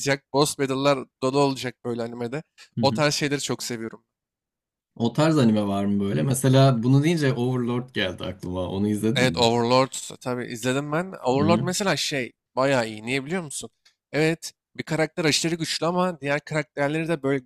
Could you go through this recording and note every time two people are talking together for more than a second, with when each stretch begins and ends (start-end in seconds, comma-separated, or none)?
none